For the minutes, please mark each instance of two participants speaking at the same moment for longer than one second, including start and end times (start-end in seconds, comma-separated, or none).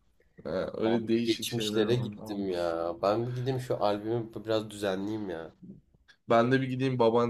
0.8-2.5